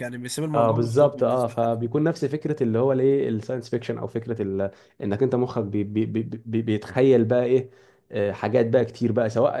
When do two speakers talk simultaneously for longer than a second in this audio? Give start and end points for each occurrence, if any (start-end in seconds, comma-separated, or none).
0.5-1.8